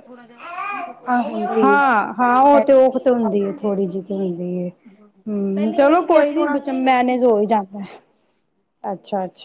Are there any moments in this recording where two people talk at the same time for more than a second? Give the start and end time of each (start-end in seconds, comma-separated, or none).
5.3-7.2